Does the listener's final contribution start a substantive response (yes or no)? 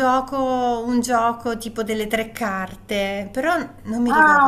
yes